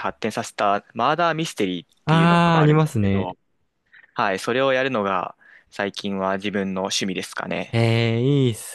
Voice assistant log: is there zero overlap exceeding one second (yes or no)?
no